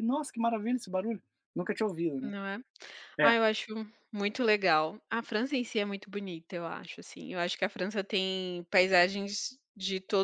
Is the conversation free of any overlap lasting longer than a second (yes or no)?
yes